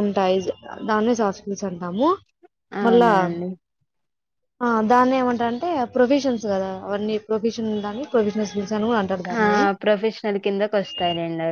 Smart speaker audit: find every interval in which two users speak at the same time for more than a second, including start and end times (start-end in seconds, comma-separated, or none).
none